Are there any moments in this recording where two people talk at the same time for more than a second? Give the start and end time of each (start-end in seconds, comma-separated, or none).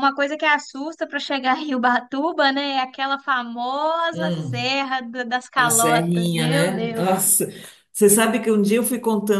5.6-7.1